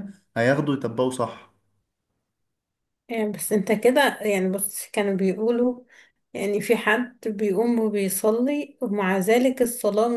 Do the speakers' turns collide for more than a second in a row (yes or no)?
no